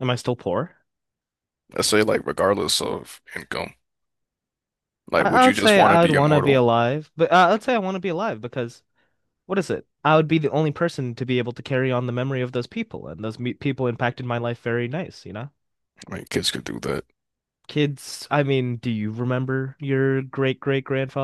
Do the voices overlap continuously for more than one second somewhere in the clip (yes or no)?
yes